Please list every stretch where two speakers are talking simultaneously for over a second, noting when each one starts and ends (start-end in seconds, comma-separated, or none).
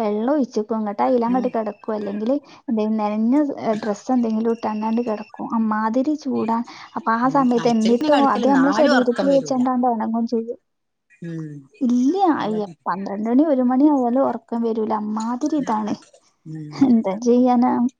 7.3-9.6